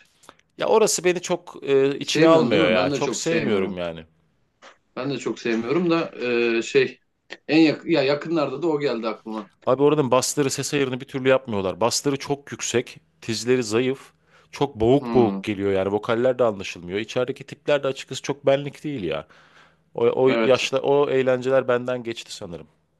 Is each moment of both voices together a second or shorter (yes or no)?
no